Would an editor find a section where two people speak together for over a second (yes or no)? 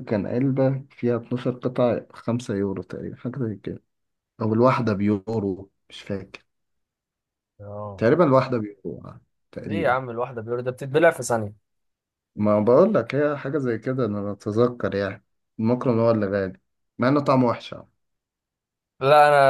no